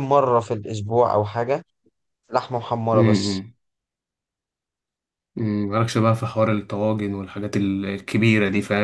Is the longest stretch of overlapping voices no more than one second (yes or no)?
yes